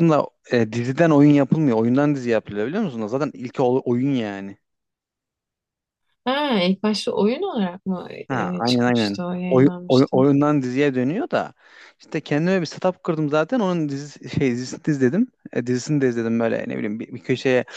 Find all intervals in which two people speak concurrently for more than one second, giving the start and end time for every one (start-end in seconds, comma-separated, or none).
8.3-10.2